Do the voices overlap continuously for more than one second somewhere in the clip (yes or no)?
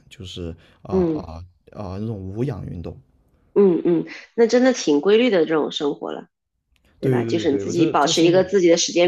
yes